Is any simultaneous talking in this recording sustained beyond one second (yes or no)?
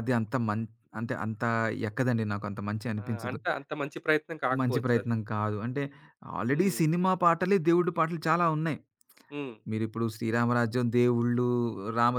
no